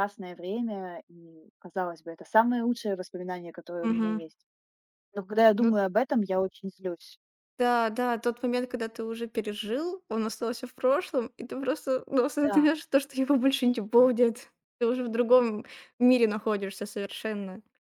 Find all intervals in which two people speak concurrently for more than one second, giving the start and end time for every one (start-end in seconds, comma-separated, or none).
none